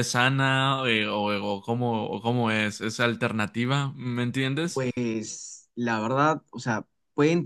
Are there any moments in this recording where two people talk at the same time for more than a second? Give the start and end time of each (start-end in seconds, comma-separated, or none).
none